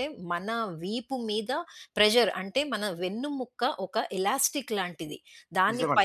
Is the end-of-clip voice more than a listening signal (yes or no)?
no